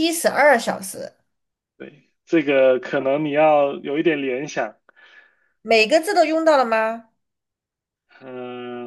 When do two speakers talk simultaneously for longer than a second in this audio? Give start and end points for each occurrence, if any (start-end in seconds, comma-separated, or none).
none